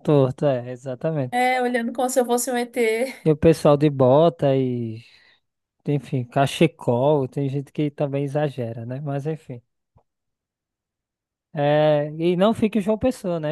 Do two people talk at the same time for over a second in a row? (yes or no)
no